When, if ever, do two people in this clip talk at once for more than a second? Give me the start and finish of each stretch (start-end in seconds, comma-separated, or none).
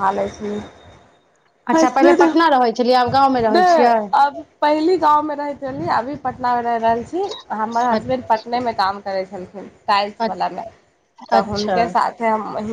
none